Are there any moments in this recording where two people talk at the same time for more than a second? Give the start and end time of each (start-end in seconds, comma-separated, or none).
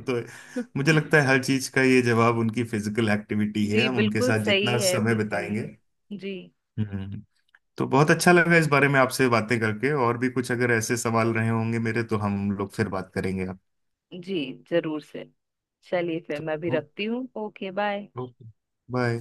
3.7-5.5